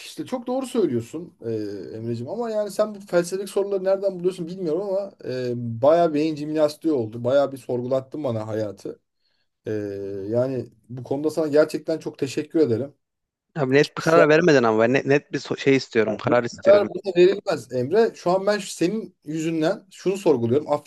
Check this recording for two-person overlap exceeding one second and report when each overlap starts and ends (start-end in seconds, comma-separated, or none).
none